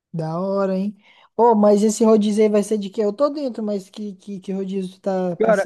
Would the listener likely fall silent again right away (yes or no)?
no